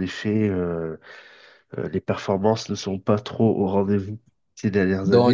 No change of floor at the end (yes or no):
no